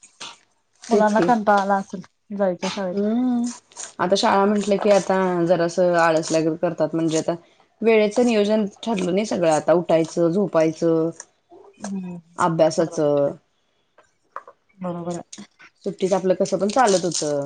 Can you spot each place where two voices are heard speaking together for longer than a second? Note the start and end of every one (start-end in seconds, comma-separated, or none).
none